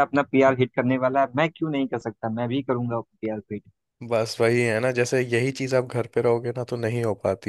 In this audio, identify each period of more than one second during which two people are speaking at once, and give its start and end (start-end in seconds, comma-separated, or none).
none